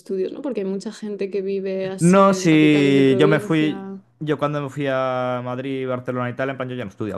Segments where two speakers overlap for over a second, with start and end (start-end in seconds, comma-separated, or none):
2.0-3.8